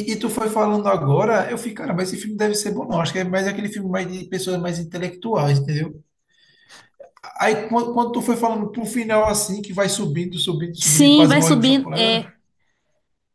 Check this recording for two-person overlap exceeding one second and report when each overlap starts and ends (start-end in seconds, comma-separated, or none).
10.8-12.2